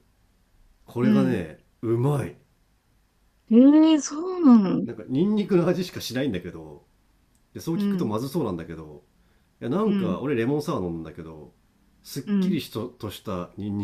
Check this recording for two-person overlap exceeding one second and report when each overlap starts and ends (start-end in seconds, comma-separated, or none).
none